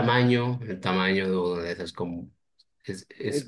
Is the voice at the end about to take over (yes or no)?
yes